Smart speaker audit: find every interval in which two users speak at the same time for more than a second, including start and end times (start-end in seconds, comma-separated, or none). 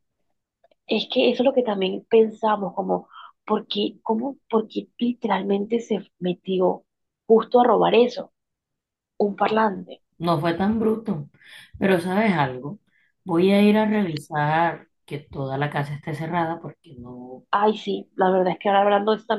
none